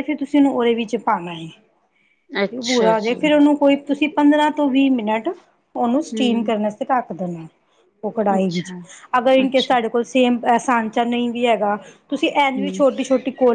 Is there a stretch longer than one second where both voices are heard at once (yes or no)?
no